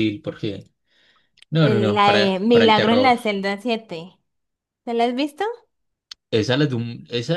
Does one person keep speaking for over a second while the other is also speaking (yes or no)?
yes